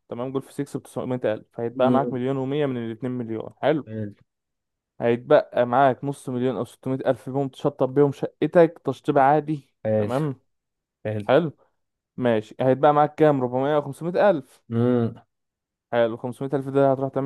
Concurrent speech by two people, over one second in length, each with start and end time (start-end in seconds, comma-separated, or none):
none